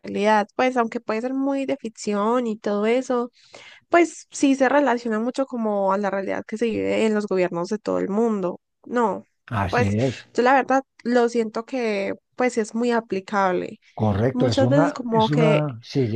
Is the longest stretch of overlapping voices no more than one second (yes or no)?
no